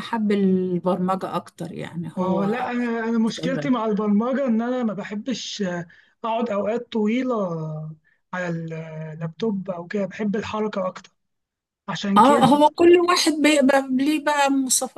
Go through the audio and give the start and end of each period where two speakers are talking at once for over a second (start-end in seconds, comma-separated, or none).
none